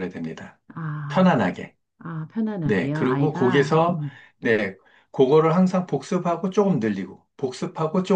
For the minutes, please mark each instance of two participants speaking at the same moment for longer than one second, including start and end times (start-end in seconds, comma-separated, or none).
2.6-4.0